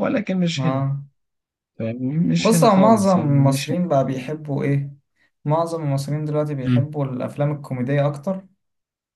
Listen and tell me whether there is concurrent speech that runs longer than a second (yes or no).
yes